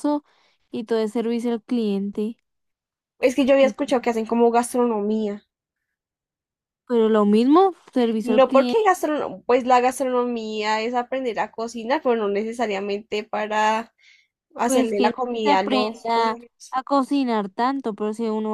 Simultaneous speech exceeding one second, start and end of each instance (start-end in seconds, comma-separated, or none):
14.6-16.8